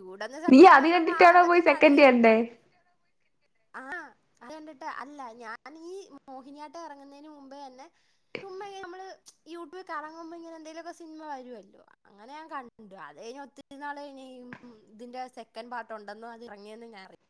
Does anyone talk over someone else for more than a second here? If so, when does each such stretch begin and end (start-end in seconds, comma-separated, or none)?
0.5-2.3